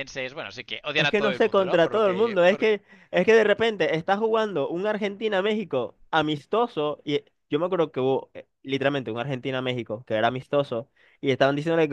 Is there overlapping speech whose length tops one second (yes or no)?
yes